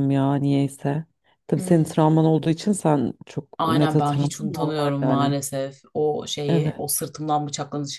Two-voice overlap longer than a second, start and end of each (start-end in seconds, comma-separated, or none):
3.6-5.3